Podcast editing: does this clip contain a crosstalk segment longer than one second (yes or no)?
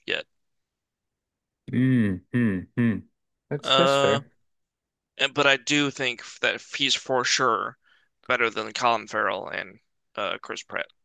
no